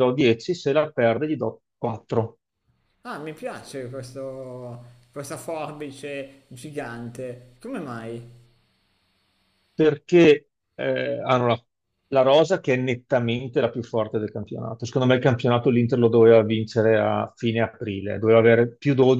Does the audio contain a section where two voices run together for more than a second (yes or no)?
no